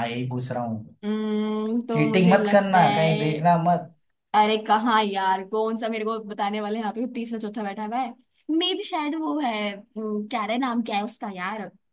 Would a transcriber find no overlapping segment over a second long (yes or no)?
no